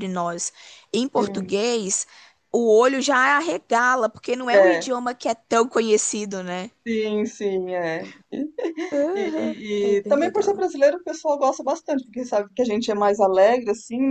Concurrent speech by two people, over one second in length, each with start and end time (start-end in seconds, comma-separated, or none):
9.1-10.6